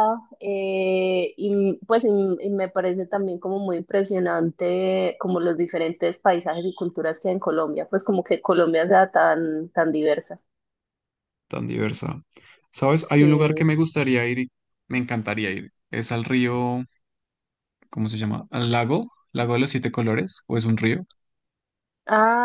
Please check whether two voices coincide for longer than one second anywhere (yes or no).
no